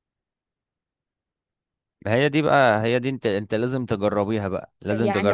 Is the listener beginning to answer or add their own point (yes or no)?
yes